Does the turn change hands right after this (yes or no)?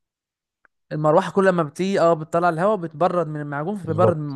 yes